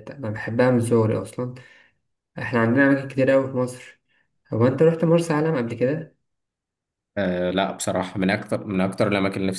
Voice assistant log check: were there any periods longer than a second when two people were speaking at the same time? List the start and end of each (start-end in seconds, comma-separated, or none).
none